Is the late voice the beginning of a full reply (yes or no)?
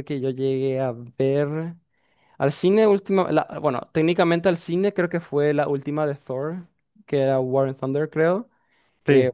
no